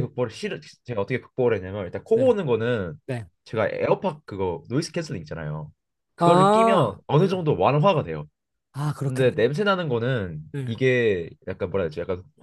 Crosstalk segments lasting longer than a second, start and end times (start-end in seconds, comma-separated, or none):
6.2-7.4